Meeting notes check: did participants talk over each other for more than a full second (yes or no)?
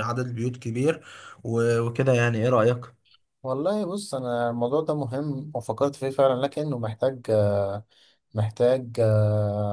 no